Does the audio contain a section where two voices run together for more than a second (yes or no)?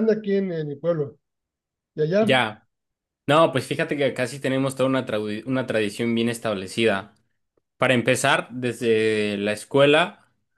no